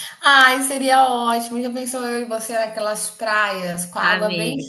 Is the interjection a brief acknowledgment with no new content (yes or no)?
yes